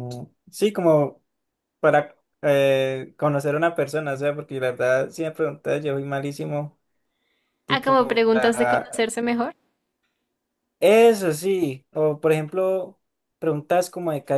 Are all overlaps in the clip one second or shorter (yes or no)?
no